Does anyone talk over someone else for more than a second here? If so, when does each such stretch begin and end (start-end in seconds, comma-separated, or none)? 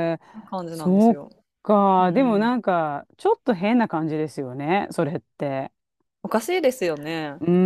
none